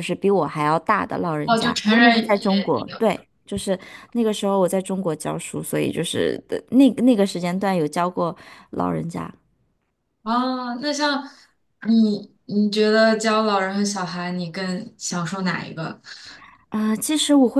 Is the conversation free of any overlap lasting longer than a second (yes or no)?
no